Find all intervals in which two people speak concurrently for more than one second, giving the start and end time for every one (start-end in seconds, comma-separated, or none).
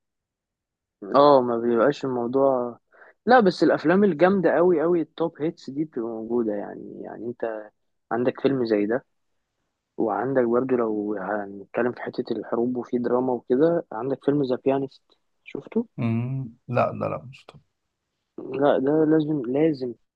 none